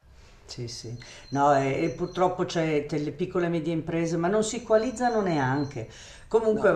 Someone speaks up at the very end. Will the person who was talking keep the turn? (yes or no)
yes